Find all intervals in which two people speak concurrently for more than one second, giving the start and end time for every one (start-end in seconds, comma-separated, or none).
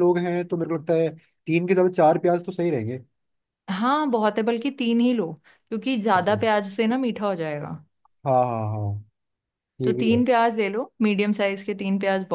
none